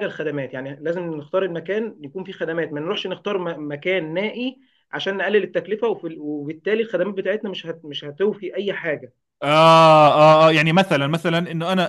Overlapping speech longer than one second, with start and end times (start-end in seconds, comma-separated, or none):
none